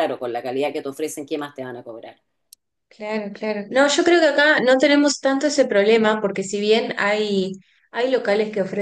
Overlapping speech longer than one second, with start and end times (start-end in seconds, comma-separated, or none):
none